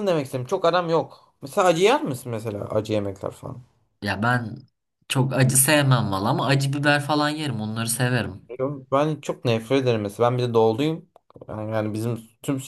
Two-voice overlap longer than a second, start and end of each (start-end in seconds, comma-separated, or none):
none